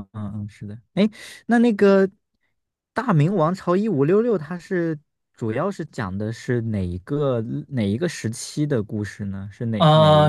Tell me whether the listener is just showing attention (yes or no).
no